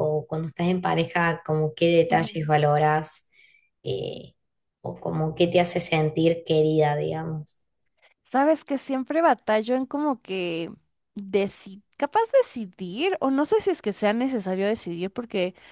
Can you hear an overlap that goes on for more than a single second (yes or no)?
no